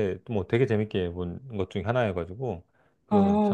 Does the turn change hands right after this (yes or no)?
yes